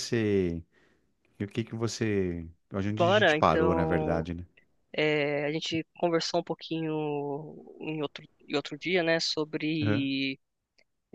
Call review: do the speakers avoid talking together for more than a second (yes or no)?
no